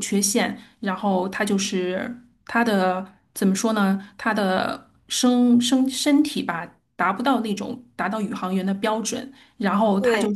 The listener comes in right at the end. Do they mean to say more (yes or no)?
no